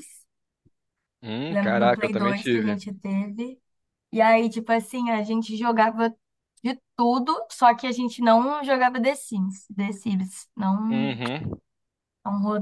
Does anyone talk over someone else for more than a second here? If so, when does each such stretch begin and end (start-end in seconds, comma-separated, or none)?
1.5-2.8